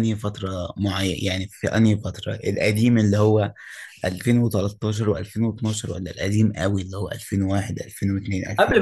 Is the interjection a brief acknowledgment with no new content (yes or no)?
no